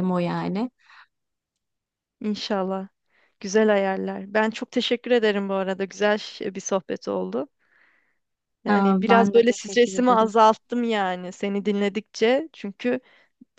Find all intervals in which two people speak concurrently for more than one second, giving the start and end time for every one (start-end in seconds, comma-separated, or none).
8.7-10.3